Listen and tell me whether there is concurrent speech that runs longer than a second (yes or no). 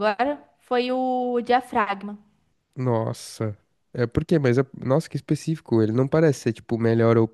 no